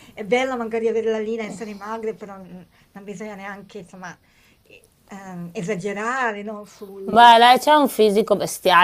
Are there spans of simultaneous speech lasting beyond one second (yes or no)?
no